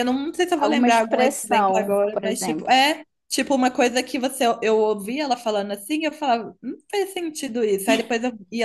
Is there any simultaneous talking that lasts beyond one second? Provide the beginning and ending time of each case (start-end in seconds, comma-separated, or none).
0.6-2.7